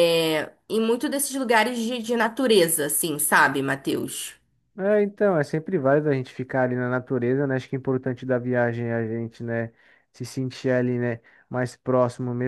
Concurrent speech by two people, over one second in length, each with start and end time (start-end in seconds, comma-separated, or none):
none